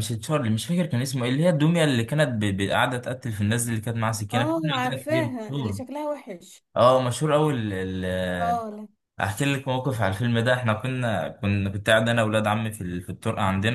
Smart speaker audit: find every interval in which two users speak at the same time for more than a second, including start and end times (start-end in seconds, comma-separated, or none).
4.3-5.8